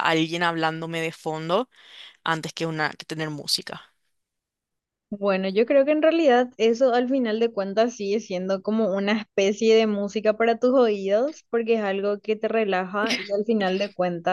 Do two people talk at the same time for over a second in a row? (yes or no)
no